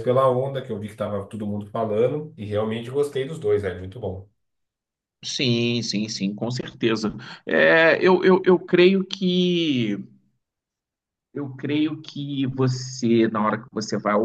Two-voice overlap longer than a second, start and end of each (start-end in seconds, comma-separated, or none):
none